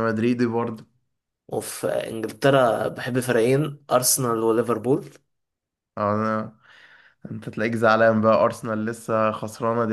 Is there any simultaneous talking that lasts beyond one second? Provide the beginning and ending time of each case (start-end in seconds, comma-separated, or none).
none